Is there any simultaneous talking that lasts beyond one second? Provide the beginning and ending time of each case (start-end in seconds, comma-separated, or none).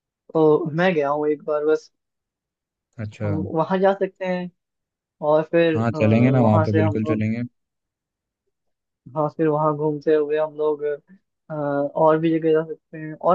5.8-7.2